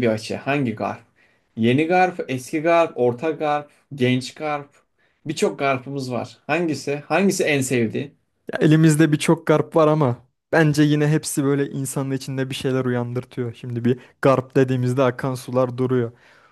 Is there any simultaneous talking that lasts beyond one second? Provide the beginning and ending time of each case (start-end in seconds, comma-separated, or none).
none